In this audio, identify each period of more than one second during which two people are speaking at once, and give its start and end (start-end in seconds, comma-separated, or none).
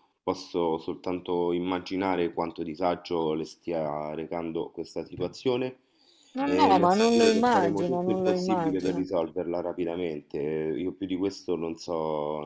6.4-9.1